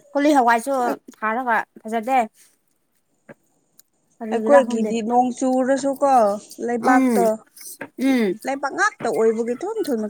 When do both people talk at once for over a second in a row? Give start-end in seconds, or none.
none